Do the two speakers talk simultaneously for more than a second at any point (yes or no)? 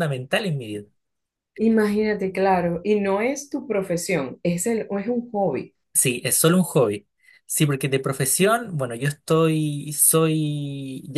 no